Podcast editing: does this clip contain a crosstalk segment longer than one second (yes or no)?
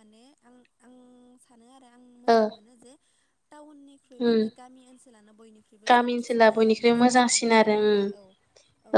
yes